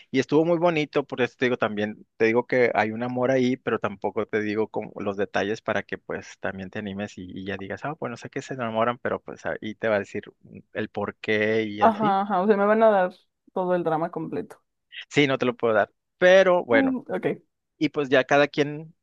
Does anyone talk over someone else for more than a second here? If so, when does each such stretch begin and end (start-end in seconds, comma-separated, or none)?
none